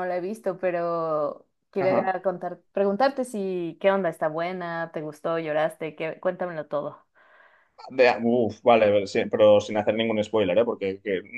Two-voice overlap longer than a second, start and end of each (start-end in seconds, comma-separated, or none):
none